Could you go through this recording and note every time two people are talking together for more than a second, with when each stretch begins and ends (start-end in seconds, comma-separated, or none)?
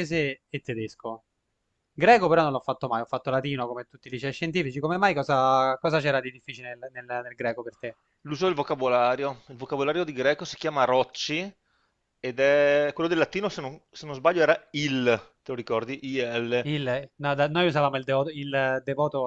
none